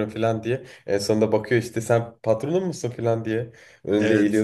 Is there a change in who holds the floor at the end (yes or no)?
yes